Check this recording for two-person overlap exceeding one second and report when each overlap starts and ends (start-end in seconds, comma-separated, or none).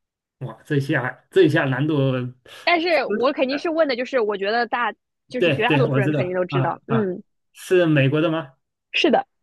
5.4-7.1